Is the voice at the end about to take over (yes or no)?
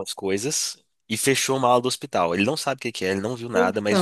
no